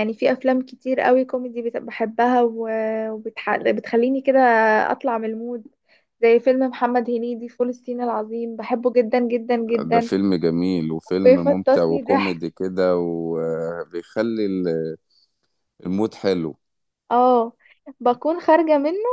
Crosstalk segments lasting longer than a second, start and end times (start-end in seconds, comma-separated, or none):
11.2-12.5